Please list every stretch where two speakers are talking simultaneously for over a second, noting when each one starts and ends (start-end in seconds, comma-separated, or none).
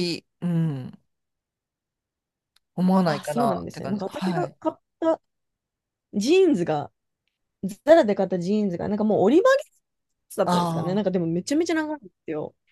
3.0-4.6